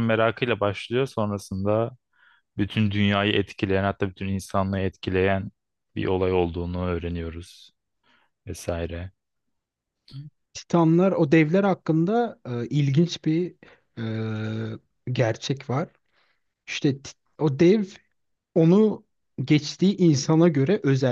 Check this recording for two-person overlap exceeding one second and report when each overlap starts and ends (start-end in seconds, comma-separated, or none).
none